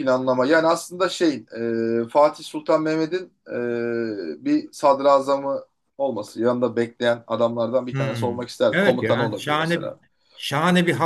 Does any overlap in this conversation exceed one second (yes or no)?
yes